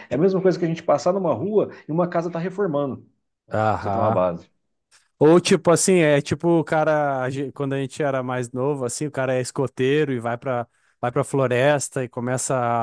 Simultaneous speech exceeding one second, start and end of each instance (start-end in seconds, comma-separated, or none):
none